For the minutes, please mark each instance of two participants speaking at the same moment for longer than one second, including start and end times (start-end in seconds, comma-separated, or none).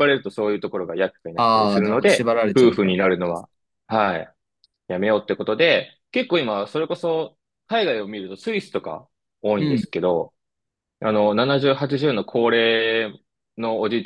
1.4-3.5